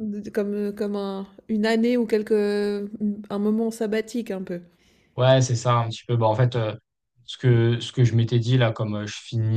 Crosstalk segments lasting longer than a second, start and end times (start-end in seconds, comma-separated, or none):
none